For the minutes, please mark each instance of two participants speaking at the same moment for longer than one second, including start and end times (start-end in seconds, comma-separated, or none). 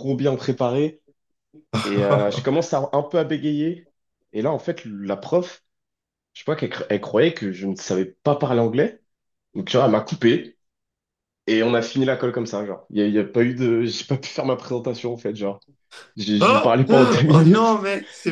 16.4-17.8